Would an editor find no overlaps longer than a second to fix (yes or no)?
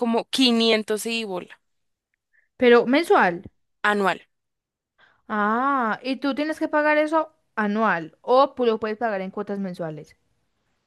yes